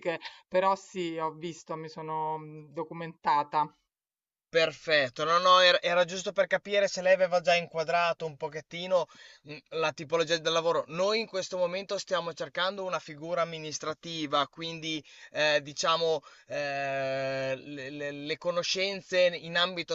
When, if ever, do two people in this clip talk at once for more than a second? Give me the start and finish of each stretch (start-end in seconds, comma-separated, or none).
none